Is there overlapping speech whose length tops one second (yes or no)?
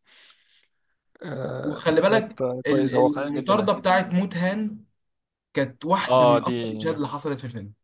yes